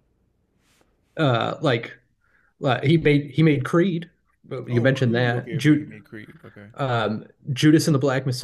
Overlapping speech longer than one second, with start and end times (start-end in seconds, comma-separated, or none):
4.7-5.9